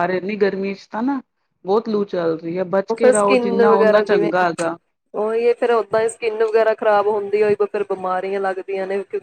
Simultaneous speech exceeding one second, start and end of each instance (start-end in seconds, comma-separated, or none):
2.9-4.3